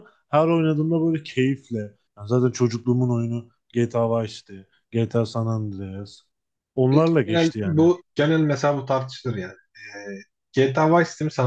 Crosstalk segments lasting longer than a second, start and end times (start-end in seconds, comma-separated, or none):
none